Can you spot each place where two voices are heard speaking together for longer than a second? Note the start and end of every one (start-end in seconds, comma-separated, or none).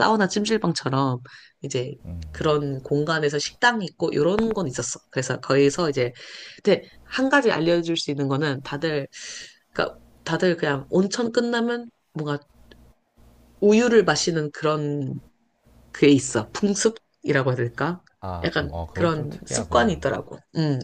18.4-20.0